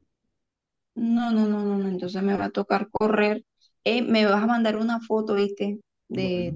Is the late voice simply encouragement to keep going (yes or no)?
yes